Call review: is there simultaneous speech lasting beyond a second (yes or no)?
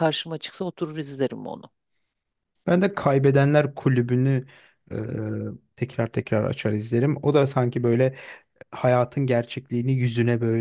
no